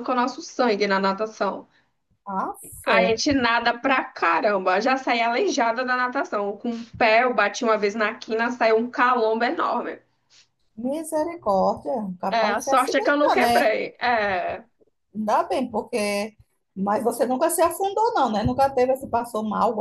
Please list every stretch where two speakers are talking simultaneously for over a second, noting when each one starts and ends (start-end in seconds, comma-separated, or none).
12.3-13.7